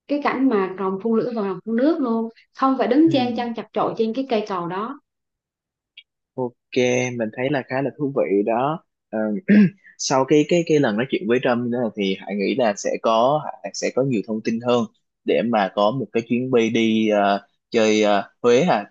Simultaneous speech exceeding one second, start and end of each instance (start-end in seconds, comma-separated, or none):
none